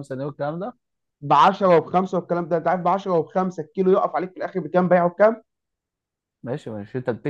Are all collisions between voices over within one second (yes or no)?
yes